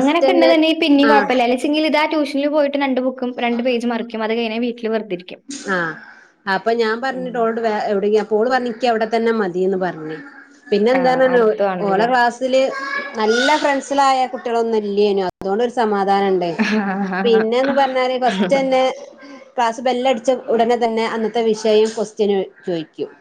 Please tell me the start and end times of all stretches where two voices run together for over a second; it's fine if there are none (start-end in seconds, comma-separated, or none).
none